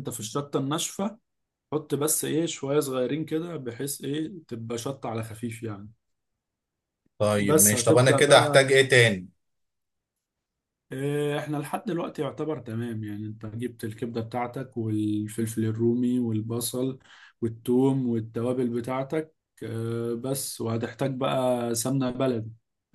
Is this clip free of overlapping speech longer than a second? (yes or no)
no